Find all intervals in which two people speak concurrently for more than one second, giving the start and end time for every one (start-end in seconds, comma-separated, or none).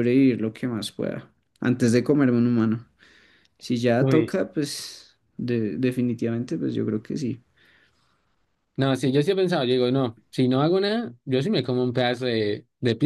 none